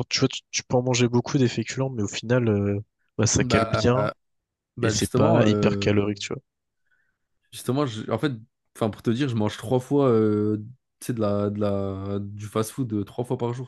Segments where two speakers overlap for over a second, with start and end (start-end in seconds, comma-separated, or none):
4.8-6.0